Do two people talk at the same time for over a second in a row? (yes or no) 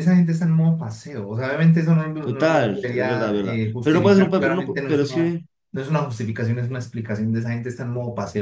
yes